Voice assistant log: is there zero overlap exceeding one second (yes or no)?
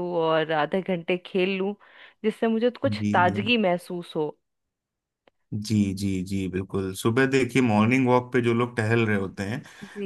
yes